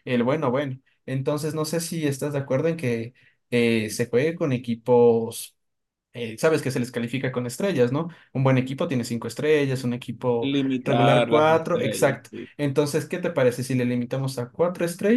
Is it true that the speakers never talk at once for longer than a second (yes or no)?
no